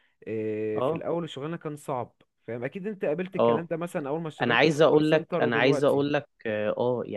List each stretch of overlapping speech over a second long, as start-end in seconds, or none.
4.4-6.0